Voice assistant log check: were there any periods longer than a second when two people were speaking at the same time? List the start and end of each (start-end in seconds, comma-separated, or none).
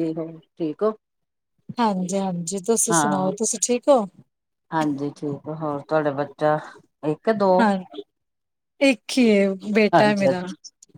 none